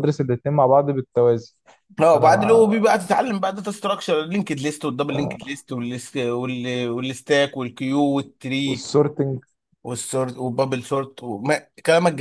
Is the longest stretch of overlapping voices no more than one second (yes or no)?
yes